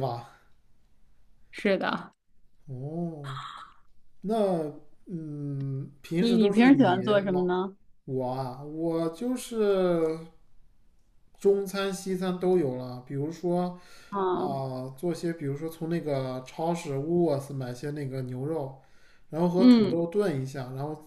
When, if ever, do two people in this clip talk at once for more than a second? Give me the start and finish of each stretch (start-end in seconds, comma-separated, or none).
6.2-7.5